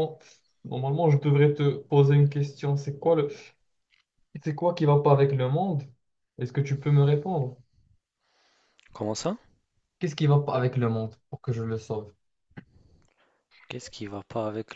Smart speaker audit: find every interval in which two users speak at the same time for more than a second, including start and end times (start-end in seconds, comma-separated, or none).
none